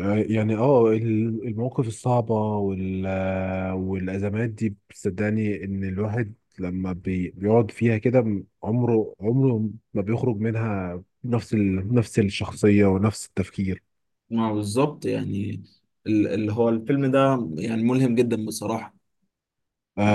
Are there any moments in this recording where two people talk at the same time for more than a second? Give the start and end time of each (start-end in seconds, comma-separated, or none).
none